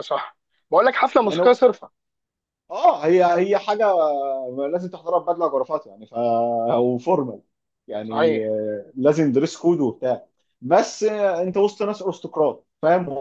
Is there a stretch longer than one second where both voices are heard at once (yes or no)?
no